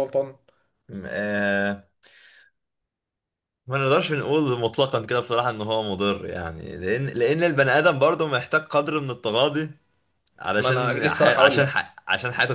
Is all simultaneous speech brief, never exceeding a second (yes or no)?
no